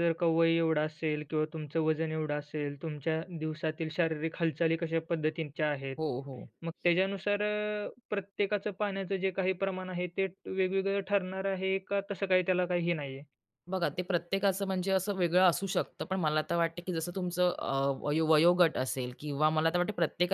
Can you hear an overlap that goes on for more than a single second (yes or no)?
no